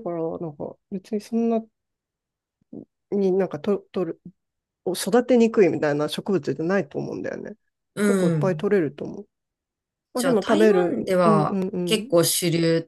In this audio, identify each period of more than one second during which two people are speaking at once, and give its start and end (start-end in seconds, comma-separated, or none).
10.2-12.1